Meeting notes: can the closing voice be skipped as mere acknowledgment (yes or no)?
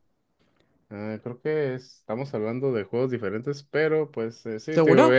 yes